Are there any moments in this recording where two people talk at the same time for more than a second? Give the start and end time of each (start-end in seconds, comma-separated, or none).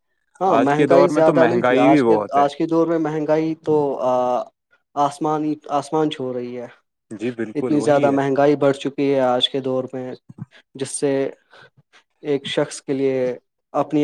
0.6-2.5